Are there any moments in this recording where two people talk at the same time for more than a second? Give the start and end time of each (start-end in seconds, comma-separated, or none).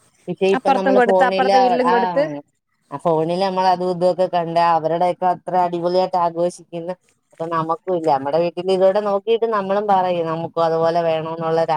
0.6-2.2